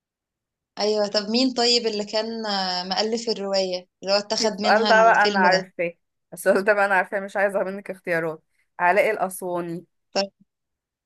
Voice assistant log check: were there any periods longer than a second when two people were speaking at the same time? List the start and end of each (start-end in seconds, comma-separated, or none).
4.4-5.7